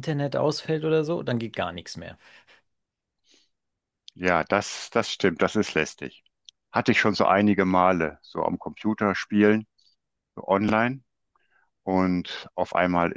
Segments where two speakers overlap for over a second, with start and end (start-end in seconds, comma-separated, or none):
none